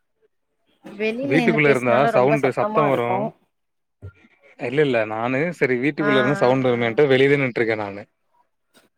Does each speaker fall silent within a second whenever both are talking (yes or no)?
no